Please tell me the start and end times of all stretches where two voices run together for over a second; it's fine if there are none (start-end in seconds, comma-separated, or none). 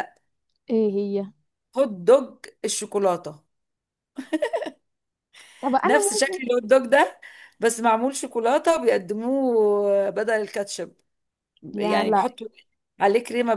none